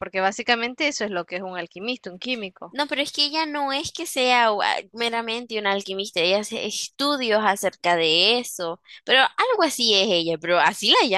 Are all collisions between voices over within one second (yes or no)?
yes